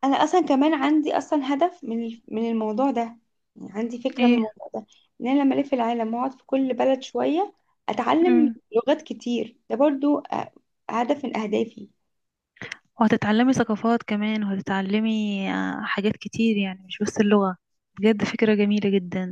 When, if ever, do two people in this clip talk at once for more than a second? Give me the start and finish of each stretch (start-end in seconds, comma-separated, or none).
none